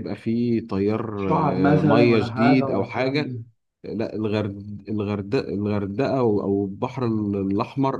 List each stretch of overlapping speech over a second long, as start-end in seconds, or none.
1.2-3.4